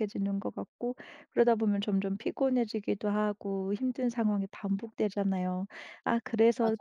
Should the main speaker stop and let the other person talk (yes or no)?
no